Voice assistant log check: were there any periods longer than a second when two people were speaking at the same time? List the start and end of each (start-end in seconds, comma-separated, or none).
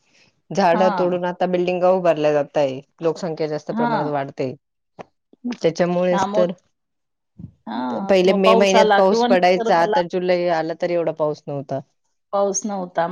8.2-10.0